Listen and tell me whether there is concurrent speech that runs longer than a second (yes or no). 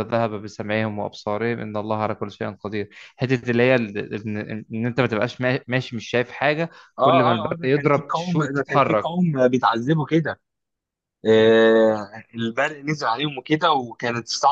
yes